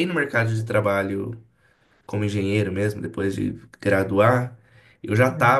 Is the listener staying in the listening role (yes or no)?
yes